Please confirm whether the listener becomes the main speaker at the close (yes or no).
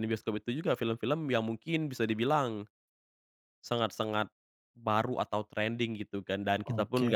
no